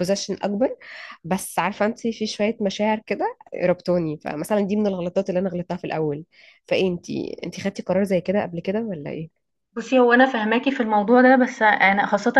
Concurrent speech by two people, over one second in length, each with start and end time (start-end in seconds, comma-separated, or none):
none